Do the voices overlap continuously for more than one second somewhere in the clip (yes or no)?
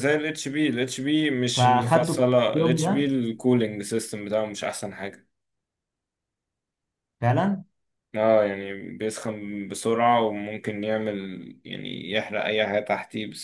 yes